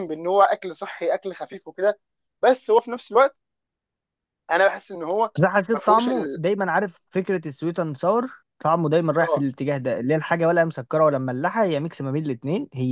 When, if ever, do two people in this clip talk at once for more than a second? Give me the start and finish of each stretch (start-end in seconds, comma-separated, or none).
none